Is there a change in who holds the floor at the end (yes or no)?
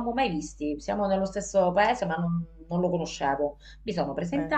no